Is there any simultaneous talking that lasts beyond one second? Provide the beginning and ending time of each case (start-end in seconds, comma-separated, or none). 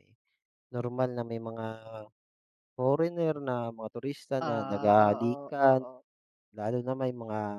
4.4-5.8